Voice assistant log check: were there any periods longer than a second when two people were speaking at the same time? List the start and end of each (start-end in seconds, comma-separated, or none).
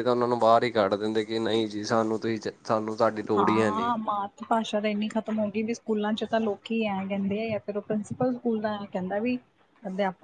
none